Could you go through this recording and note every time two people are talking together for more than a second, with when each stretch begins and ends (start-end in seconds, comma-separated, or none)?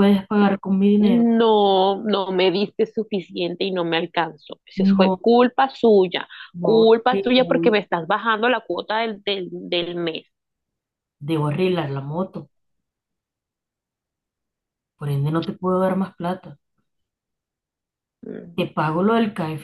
6.5-7.8